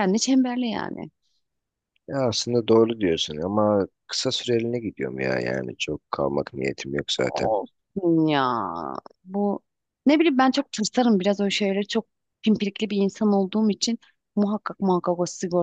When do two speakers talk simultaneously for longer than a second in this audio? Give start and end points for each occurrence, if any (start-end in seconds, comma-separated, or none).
none